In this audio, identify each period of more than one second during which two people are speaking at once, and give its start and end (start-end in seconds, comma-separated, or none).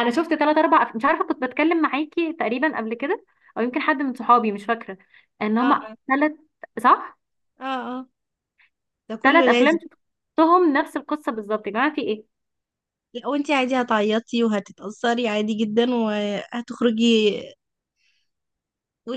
none